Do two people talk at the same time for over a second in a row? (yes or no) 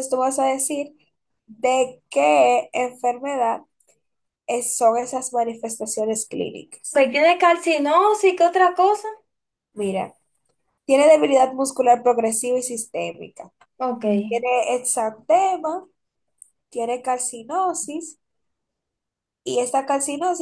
no